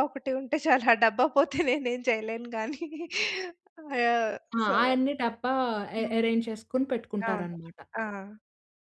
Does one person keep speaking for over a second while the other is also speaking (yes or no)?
no